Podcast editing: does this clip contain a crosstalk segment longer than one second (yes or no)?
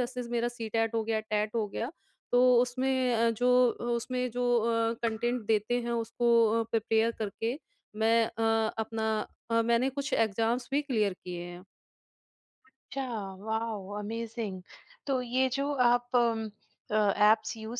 no